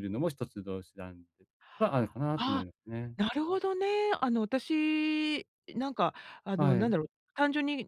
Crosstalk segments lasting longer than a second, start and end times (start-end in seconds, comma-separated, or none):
none